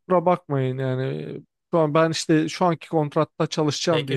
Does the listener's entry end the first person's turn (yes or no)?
yes